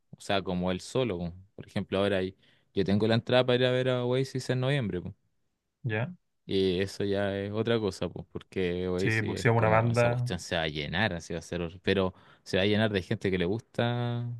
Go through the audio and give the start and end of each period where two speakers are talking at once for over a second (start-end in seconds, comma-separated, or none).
9.0-10.3